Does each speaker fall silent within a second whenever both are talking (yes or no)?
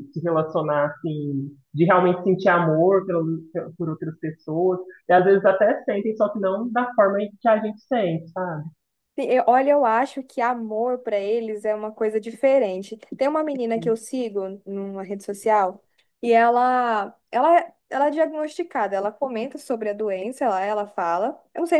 yes